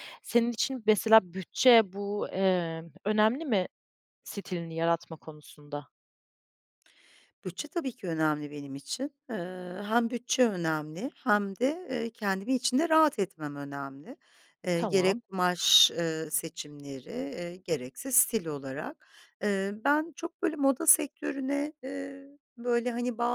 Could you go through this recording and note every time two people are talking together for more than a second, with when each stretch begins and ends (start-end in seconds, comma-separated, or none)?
none